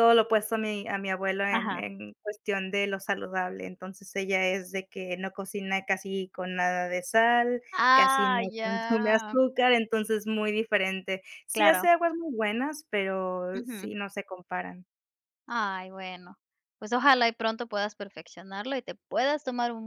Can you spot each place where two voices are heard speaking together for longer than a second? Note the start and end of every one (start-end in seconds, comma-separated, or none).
7.7-9.4